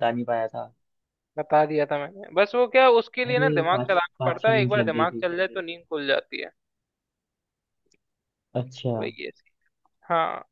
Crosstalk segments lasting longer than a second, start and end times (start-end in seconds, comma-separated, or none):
3.3-5.3